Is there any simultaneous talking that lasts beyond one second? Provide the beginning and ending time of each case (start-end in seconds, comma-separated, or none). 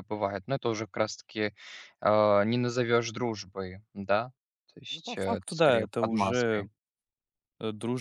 4.9-6.7